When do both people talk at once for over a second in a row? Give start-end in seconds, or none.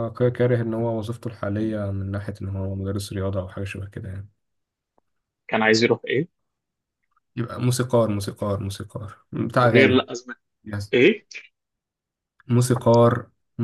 none